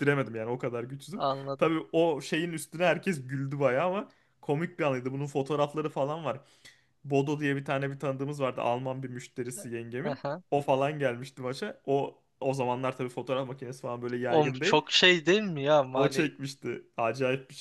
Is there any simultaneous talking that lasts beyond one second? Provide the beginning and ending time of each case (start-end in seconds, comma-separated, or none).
none